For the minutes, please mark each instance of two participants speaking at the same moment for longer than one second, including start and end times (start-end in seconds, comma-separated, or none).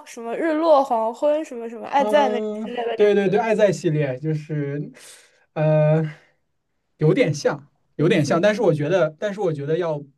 2.0-3.4